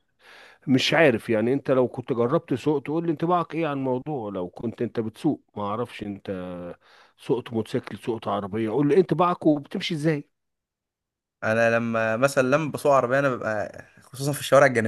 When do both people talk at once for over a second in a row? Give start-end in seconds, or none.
none